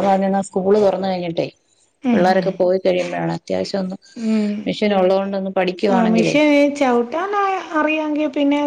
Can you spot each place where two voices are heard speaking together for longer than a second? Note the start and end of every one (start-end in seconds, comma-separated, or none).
none